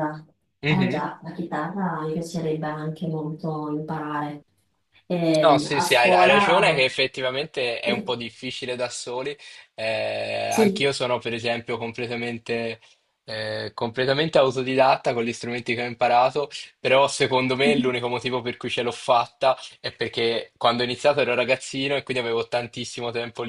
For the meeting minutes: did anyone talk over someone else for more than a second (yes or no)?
yes